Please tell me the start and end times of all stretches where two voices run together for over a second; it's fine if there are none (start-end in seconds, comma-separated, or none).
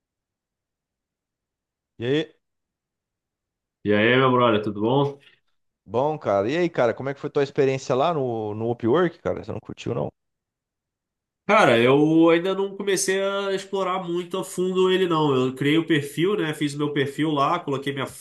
none